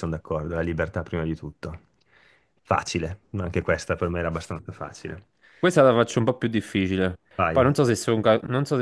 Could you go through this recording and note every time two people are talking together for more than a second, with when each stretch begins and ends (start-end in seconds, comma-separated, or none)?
none